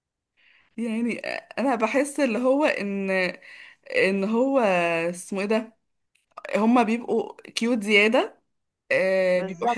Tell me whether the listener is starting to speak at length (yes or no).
no